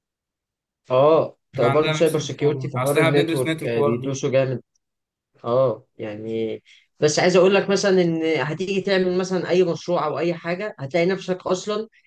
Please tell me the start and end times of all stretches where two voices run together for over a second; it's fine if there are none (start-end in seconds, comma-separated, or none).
1.6-4.2